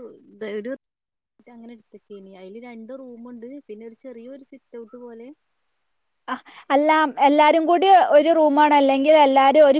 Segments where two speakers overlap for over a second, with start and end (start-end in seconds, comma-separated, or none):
none